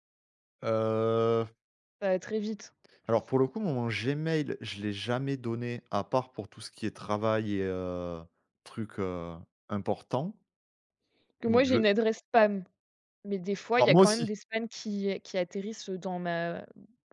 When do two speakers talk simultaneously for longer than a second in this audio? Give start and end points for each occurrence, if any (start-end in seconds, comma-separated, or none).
none